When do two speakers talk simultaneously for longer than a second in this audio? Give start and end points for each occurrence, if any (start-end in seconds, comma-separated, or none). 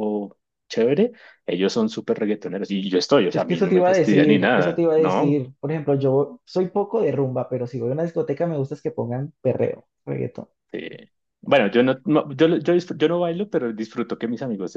3.3-5.4